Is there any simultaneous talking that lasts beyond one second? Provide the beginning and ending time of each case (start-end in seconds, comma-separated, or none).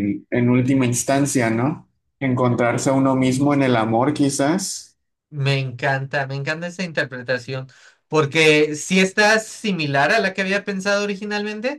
none